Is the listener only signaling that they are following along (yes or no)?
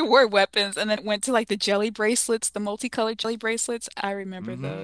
no